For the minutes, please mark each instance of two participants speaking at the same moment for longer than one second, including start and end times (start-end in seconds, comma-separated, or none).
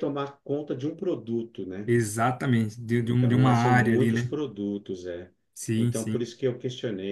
3.0-4.3